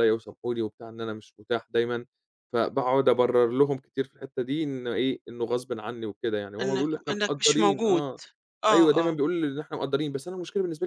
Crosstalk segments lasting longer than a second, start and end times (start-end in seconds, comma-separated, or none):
6.6-8.0